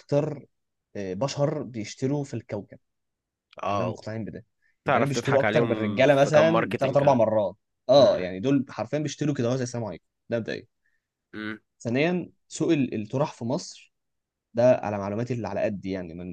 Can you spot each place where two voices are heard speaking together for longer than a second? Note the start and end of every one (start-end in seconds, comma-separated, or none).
4.9-7.2